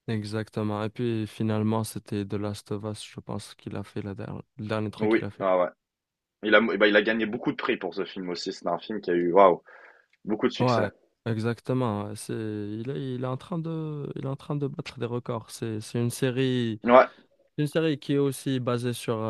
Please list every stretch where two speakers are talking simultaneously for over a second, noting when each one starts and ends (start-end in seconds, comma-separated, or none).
none